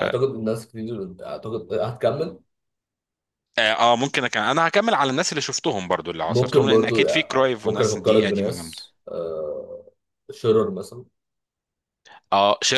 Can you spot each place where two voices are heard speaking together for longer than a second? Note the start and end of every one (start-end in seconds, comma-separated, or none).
6.3-8.8